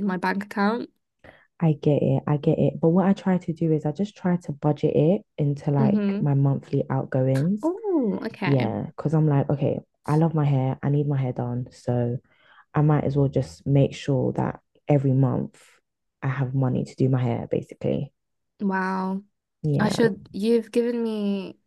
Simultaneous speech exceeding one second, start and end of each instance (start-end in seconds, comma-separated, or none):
none